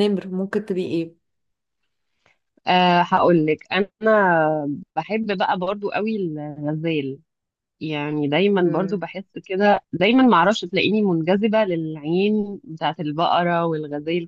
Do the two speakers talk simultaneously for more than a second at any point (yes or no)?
no